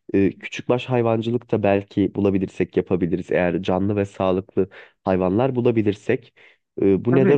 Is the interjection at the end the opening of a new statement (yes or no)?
yes